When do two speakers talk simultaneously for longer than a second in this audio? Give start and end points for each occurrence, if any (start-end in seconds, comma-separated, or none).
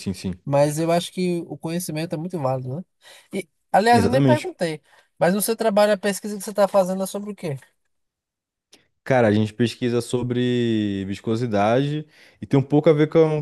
none